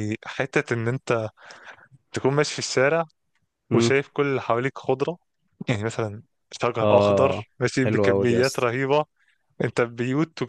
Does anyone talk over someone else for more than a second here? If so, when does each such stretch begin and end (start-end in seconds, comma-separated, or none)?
6.8-8.7